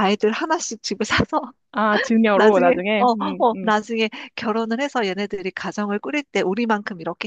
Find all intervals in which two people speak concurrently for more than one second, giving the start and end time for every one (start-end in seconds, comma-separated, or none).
2.3-3.7